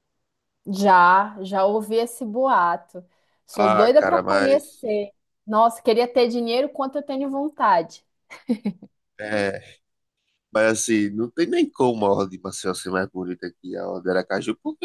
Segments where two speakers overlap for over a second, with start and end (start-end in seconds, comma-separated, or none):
3.5-4.9